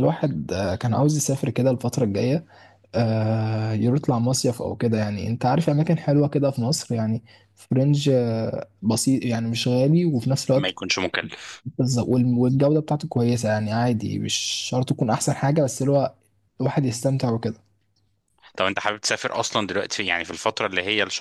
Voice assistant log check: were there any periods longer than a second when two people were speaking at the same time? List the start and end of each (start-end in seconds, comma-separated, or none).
none